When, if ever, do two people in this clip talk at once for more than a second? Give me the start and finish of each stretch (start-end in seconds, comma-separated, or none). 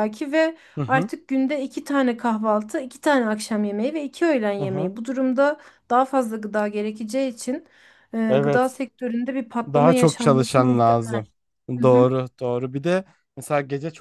9.7-11.2